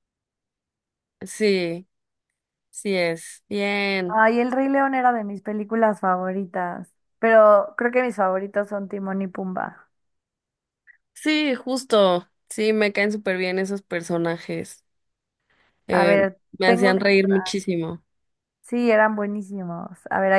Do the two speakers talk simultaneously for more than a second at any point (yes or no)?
yes